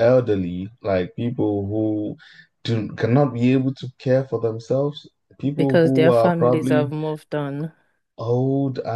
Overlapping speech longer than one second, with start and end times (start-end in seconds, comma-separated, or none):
5.5-6.9